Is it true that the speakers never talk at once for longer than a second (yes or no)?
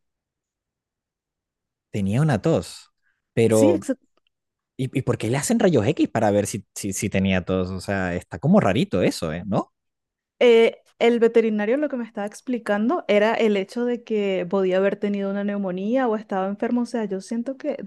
yes